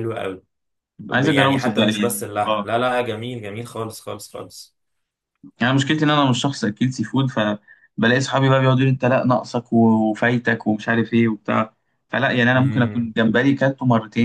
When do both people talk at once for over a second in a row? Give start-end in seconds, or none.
1.1-2.7